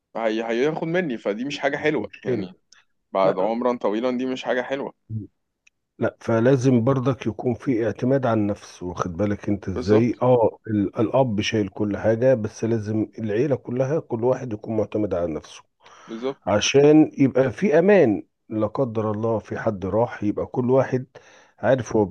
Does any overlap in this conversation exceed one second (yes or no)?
no